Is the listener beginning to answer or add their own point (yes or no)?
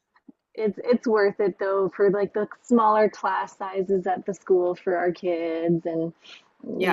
yes